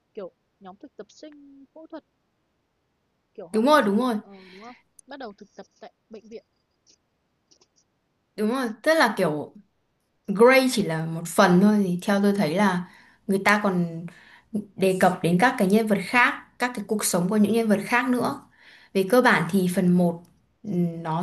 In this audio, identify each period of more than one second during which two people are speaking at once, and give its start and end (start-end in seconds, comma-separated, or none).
none